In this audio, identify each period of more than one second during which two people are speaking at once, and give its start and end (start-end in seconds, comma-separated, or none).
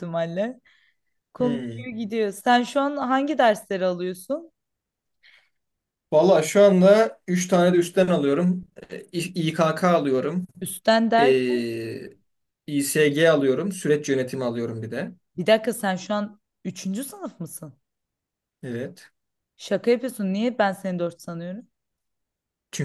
none